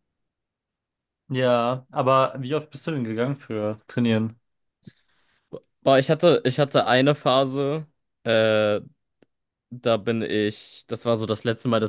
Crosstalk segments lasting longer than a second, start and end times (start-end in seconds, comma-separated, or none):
none